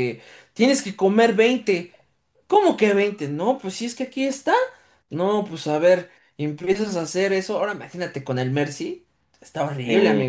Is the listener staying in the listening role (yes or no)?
no